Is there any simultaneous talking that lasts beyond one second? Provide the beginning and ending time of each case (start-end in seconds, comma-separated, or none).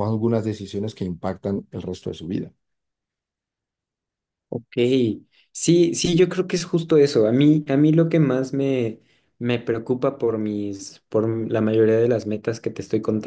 none